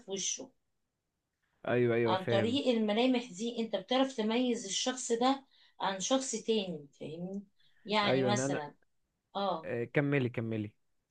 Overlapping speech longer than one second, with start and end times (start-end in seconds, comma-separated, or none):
none